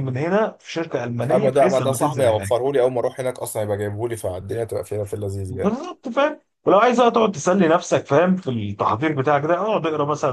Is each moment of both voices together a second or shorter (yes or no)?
no